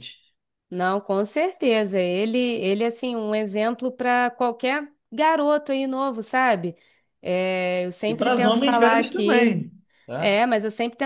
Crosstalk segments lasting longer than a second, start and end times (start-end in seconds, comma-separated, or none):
8.1-9.6